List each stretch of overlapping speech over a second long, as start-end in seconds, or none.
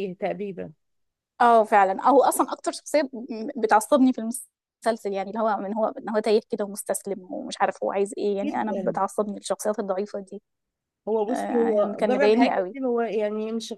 11.3-12.8